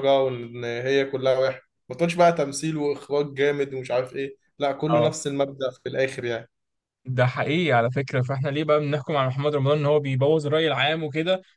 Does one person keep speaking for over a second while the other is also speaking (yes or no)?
no